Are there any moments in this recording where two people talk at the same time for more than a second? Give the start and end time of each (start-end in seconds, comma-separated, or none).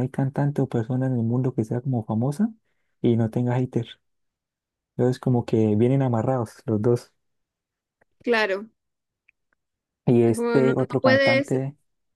10.2-11.5